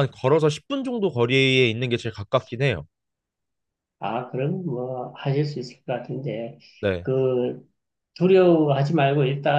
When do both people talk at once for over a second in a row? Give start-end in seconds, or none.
none